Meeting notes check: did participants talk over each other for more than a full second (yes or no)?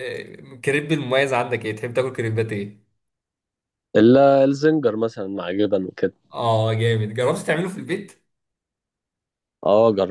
no